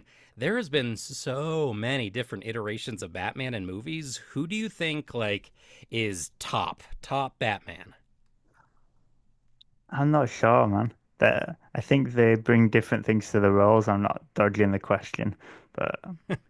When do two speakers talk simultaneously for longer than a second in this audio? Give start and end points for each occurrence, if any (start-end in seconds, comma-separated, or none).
none